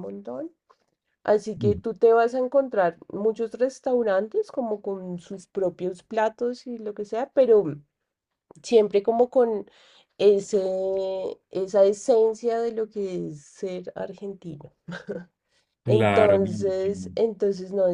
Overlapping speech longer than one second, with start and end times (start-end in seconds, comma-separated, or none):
15.9-17.2